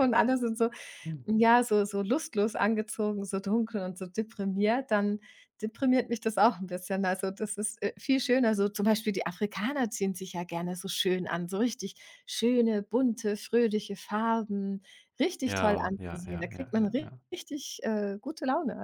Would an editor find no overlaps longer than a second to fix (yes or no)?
no